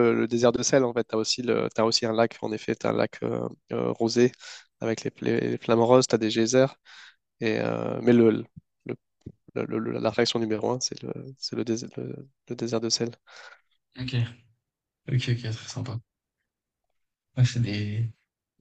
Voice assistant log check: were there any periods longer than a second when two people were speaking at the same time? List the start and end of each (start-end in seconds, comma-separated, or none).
none